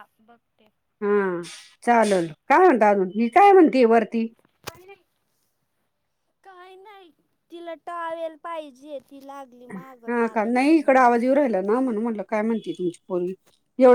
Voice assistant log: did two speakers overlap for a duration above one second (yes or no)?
no